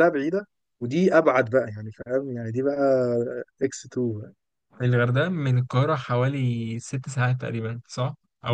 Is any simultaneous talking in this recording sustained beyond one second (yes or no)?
no